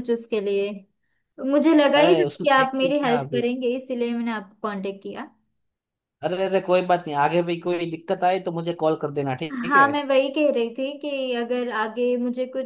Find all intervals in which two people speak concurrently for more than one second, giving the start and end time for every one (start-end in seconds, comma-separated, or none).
2.0-3.4